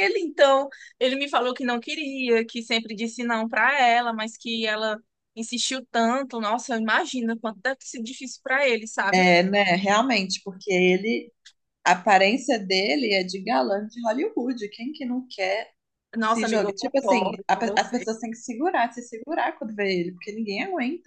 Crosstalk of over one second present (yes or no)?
yes